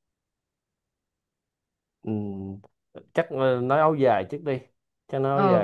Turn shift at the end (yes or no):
yes